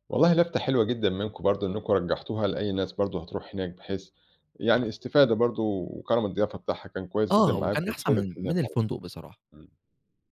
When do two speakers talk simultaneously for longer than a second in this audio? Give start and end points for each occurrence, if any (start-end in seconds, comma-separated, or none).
7.3-8.8